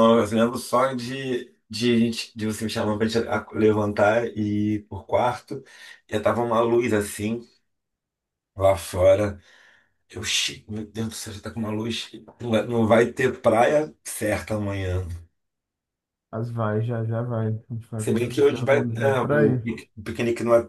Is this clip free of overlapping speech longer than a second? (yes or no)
no